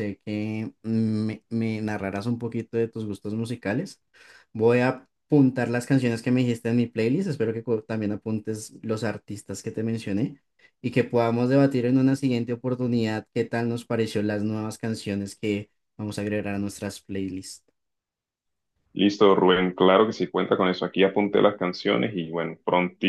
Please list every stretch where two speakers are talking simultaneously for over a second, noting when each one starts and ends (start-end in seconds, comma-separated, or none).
none